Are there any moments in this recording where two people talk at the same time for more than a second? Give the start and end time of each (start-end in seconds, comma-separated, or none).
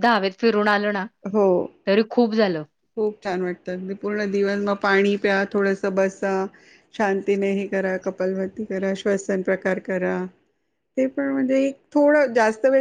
none